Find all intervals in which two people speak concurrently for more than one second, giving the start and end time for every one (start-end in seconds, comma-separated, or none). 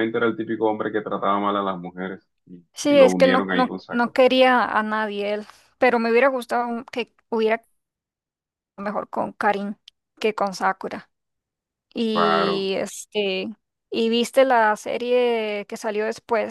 2.7-4.2